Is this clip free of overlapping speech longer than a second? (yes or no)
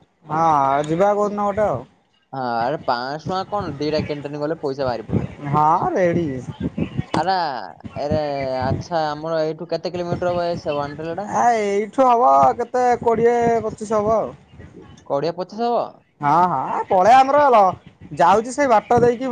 yes